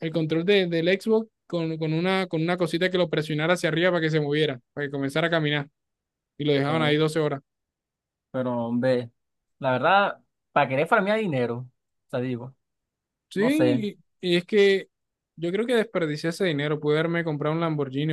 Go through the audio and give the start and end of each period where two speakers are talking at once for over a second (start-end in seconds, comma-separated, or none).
none